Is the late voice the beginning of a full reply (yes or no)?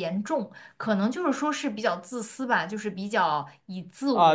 yes